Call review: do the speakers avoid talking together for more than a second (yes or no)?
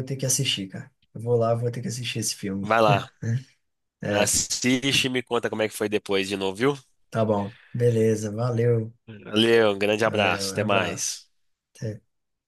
no